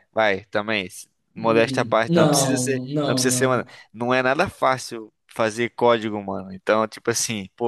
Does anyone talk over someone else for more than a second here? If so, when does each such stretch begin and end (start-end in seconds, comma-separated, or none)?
1.4-3.7